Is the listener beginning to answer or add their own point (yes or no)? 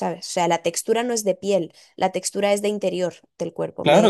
yes